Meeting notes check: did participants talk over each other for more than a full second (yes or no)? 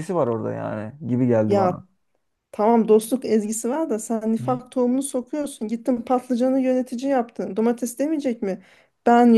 no